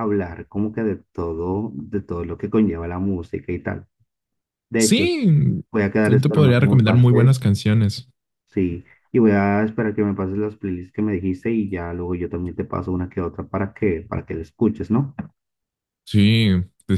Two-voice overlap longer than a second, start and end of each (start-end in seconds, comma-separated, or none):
6.0-7.4